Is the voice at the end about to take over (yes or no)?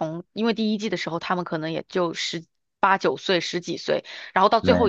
no